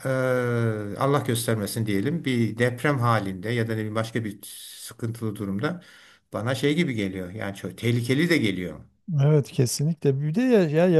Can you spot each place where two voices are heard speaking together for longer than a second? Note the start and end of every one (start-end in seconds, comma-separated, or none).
none